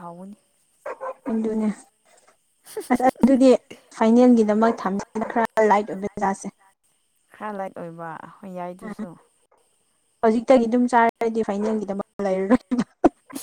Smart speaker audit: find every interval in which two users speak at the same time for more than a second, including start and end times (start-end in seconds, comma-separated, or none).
4.4-6.0